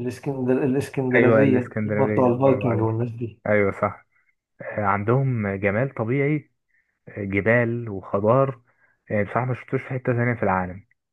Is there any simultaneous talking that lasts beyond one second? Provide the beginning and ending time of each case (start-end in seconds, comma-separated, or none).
1.1-3.0